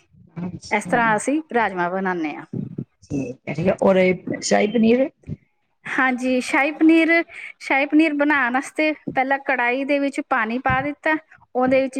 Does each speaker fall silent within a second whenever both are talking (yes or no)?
yes